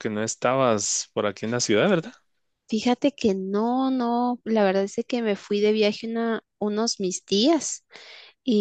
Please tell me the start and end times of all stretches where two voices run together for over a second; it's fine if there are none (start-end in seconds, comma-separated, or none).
none